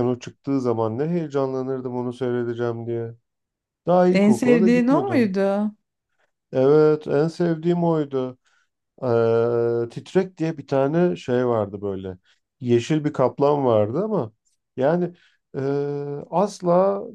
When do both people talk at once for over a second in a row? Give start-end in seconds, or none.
4.1-5.3